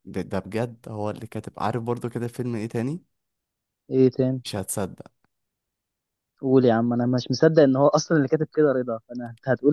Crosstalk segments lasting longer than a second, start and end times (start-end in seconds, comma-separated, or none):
none